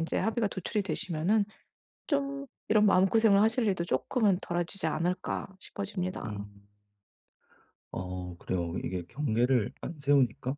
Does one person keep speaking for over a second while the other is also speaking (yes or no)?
no